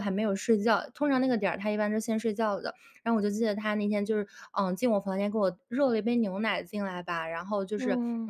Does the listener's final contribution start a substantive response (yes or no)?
no